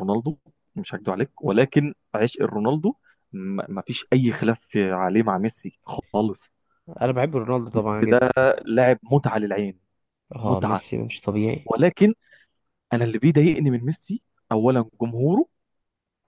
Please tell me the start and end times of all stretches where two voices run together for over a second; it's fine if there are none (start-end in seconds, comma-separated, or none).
none